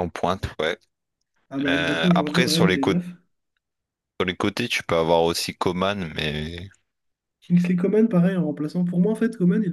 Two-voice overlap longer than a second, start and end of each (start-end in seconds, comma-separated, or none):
1.7-3.0